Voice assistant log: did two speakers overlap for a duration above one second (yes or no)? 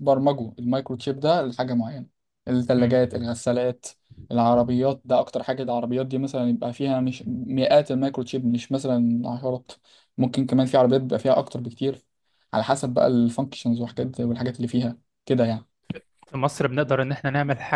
no